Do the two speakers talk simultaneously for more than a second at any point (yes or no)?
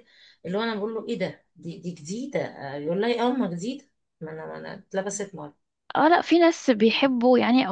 no